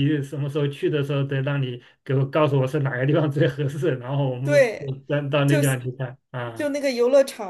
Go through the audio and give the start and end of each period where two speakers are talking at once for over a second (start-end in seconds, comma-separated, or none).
none